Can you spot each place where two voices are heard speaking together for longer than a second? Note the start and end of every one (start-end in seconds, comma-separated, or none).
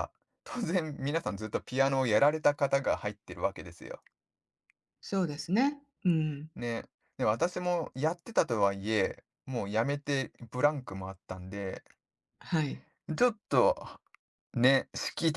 none